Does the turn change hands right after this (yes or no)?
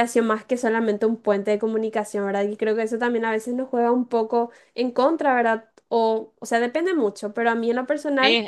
yes